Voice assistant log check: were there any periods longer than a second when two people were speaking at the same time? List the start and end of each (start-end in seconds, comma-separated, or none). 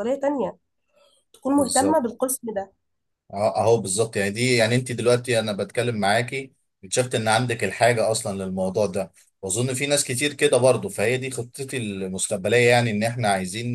none